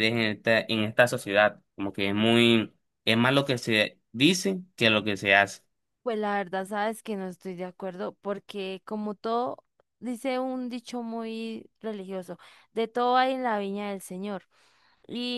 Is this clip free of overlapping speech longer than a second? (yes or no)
yes